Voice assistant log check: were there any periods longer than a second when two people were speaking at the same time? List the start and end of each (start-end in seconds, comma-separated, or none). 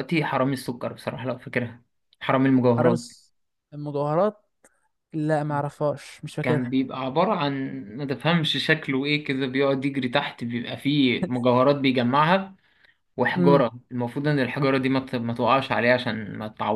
none